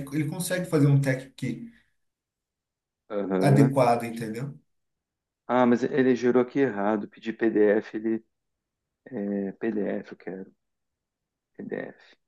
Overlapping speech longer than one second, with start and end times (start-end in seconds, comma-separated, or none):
none